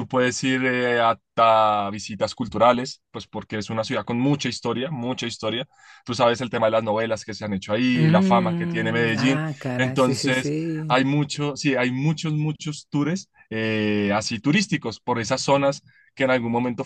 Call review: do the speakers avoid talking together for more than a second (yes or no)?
no